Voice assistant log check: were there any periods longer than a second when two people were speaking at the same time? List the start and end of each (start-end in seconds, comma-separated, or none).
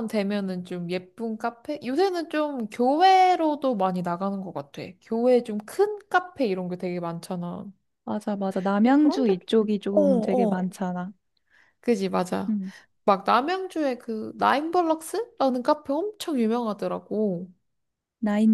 8.8-10.7